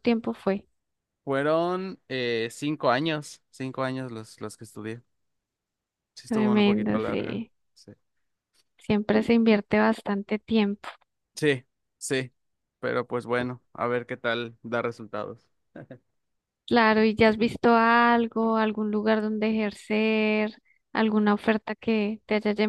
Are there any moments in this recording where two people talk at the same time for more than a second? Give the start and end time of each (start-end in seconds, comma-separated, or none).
6.3-7.5